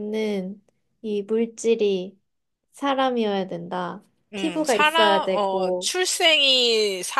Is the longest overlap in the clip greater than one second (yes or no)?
yes